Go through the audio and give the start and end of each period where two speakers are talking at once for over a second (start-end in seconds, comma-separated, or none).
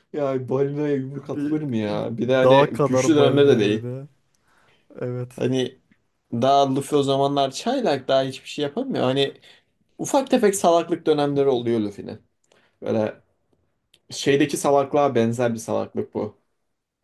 2.4-3.8